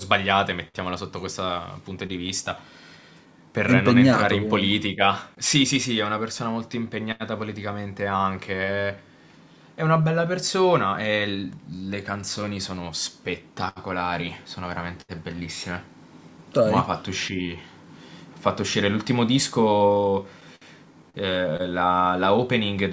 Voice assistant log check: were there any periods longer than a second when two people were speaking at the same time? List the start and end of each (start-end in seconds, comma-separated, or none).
3.6-4.8